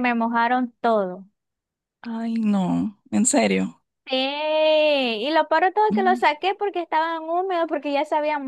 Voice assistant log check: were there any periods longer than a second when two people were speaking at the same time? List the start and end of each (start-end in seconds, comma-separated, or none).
none